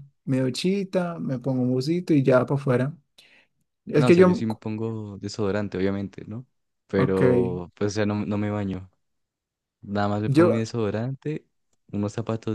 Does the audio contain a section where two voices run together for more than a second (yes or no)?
no